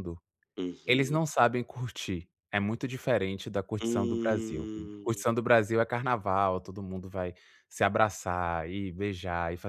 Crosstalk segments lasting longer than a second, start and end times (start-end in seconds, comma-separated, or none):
3.8-5.2